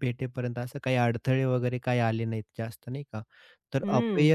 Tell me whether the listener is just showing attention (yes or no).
yes